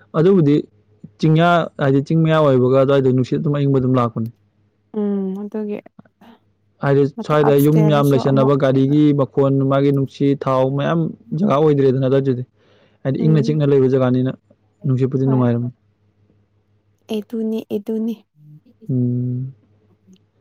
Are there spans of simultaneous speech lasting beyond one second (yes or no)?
yes